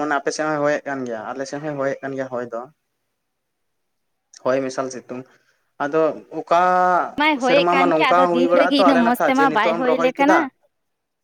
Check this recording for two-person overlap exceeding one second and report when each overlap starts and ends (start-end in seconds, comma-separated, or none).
7.5-10.3